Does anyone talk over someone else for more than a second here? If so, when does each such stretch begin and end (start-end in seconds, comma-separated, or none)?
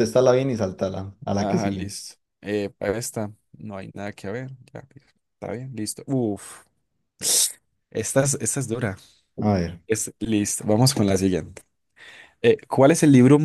none